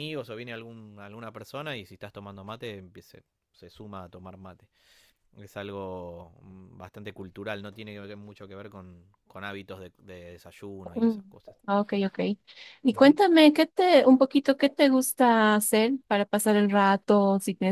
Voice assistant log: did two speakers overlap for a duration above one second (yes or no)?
no